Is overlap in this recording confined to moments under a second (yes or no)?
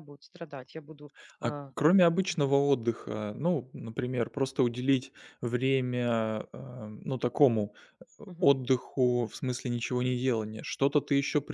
yes